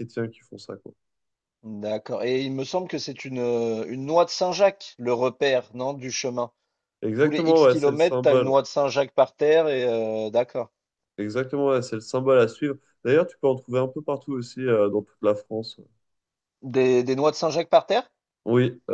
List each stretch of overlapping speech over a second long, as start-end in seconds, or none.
7.2-8.5